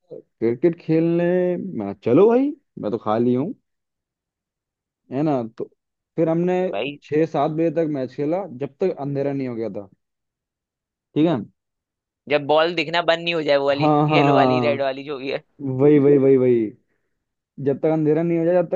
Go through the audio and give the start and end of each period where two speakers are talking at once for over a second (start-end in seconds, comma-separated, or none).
13.8-15.1